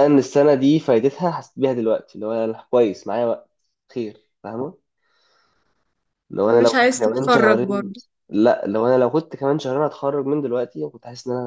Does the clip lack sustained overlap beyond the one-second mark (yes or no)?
no